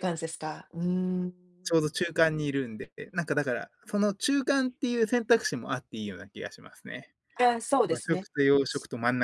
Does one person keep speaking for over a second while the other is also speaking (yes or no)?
no